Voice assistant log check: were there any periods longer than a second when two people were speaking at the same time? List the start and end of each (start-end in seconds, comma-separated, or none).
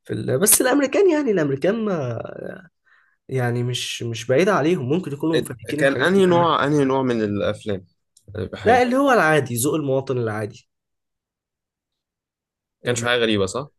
5.3-6.6